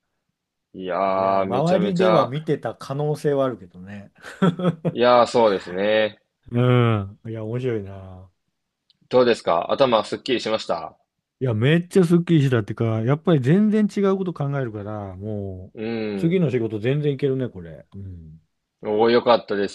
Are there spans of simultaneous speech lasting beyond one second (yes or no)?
yes